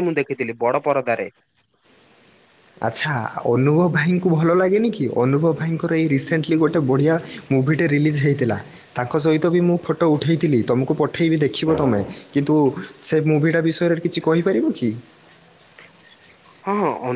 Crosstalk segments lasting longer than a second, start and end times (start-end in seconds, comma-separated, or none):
none